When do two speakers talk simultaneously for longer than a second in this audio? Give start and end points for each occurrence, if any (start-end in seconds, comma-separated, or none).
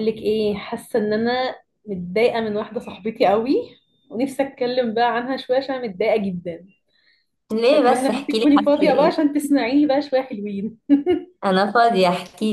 7.7-9.2